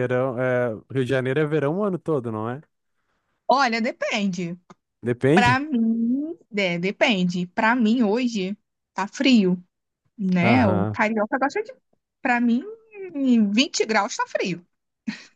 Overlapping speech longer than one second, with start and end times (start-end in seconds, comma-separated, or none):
none